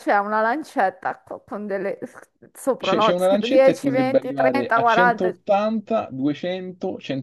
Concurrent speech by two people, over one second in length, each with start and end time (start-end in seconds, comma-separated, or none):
2.8-5.3